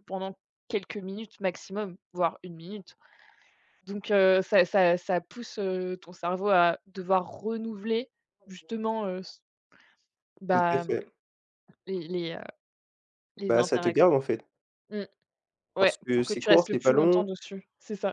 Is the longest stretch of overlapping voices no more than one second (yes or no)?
no